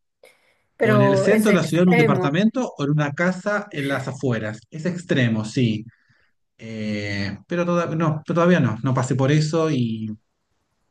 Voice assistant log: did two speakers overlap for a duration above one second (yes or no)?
yes